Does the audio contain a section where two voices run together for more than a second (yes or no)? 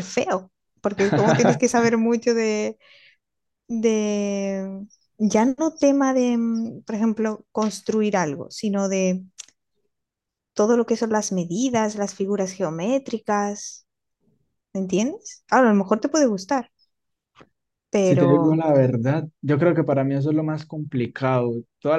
no